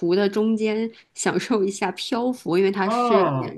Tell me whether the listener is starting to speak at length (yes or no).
yes